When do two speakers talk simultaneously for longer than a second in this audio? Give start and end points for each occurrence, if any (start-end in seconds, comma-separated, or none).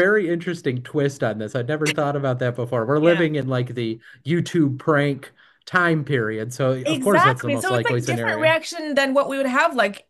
6.8-8.6